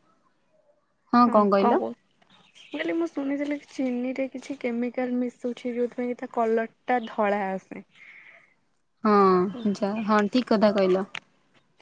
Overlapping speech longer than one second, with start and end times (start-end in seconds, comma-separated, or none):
none